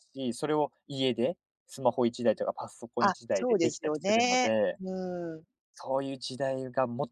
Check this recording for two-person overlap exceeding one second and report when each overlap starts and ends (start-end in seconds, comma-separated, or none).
3.0-4.8